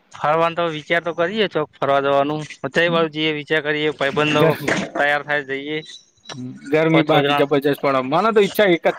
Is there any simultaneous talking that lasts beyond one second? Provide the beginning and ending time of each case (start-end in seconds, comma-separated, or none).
none